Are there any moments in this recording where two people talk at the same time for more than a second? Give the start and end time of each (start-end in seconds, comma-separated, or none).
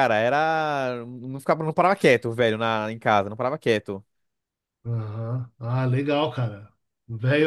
none